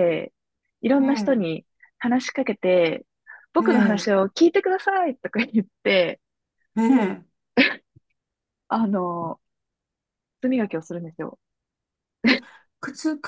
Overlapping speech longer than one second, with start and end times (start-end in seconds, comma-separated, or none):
none